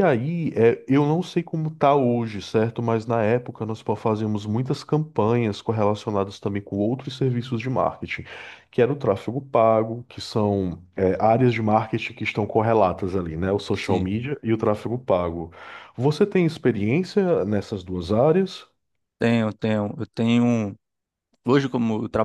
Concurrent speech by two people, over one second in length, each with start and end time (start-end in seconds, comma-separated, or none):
none